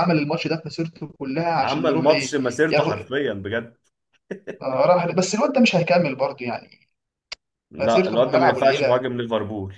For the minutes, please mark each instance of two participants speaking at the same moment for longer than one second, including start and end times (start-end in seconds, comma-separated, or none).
1.6-3.1, 7.8-9.0